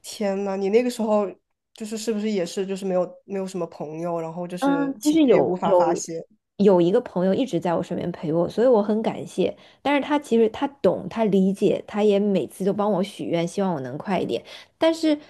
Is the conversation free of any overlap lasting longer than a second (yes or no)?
no